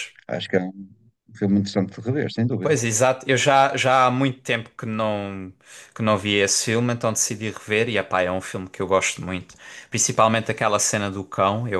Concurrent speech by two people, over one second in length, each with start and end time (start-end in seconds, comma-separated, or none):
none